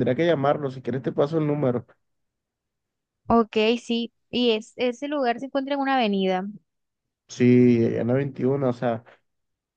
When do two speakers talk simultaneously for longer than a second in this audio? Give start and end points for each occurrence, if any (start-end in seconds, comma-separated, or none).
none